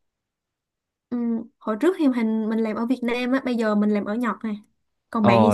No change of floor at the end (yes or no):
no